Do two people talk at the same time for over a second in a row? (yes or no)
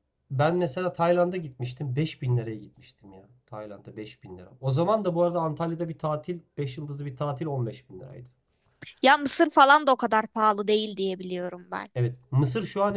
no